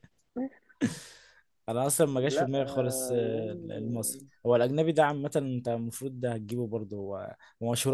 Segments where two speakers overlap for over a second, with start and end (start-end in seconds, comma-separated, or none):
2.3-4.3